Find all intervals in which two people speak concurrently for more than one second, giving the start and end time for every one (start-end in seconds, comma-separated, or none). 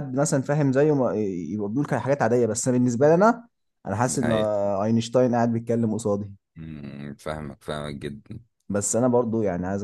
none